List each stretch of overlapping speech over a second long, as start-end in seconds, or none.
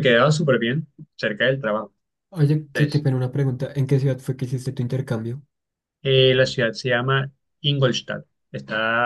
none